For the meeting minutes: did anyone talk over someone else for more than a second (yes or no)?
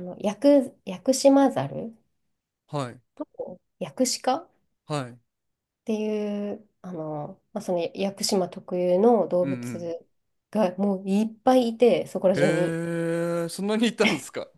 no